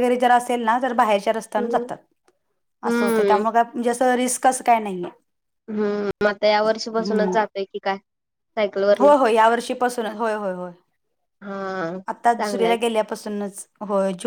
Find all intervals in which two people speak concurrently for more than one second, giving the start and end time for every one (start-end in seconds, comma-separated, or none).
none